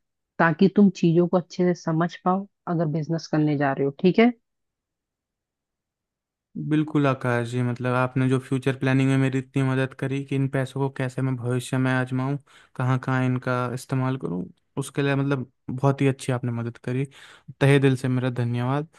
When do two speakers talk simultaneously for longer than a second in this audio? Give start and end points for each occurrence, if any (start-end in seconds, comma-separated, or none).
none